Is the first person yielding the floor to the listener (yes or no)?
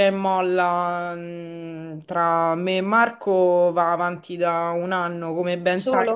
no